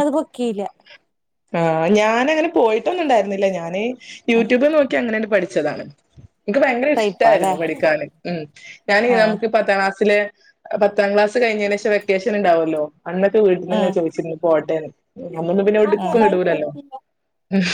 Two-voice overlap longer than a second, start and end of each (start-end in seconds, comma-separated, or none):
none